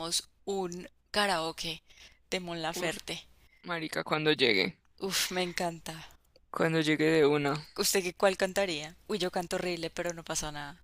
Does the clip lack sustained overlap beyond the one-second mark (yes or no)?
yes